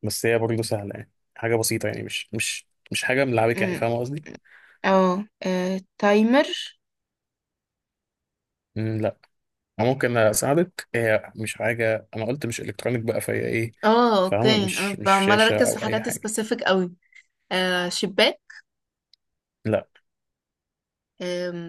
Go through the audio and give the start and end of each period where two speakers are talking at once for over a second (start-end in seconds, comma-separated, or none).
14.2-16.3